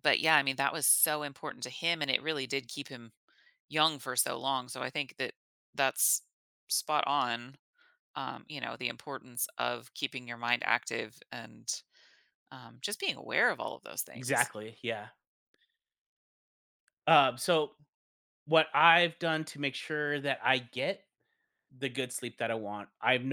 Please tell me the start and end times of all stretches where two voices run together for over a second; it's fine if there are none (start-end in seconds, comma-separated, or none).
none